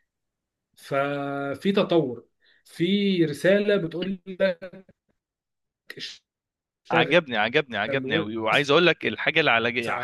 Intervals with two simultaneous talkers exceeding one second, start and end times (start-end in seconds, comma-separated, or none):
none